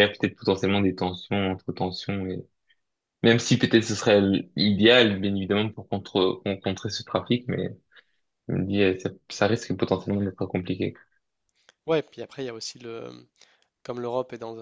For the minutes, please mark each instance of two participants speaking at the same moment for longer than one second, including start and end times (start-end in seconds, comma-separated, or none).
none